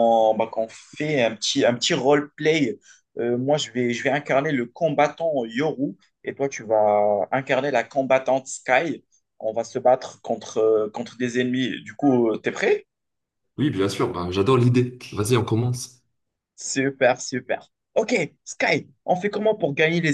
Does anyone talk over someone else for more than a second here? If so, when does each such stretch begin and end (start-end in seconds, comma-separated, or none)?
none